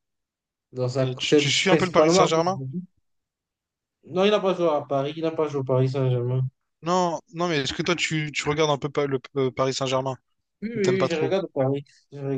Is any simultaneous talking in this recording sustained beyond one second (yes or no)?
yes